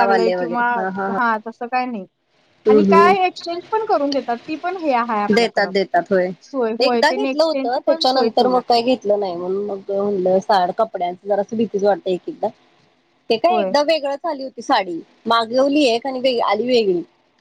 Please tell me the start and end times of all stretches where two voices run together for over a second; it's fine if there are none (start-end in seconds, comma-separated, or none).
6.8-8.6